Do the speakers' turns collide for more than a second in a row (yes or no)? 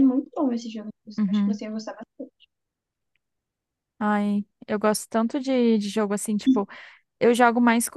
no